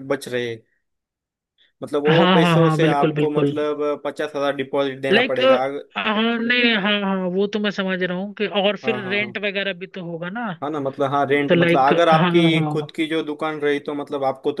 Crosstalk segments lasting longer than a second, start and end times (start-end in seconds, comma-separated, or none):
2.1-3.5, 11.5-12.9